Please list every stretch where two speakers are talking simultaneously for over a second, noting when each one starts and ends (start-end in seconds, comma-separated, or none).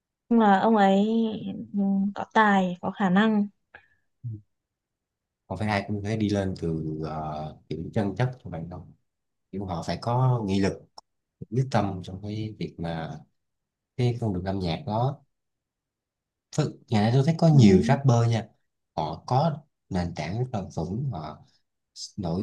none